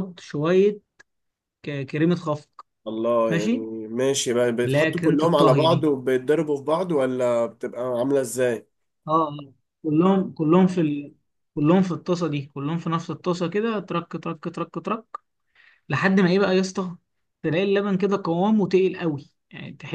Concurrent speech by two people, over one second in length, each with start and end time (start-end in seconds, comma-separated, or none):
4.7-5.9